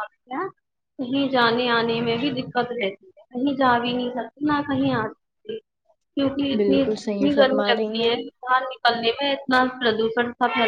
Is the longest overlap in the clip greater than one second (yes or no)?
yes